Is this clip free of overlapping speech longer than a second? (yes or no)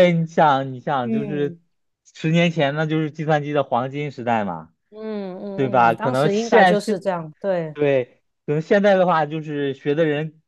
no